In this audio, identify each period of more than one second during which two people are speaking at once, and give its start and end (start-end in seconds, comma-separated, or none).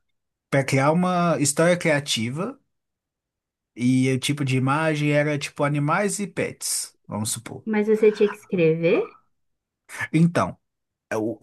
none